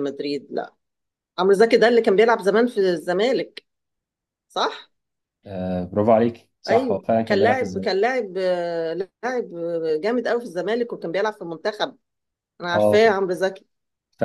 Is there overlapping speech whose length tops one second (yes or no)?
yes